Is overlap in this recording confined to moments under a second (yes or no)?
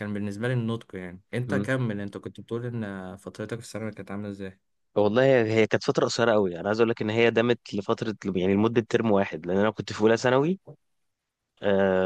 yes